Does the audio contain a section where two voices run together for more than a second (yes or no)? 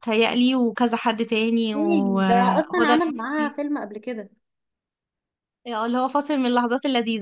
yes